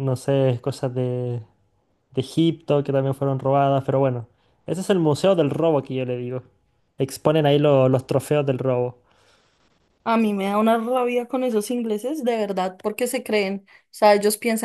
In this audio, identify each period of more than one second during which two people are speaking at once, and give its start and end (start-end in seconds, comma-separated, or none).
none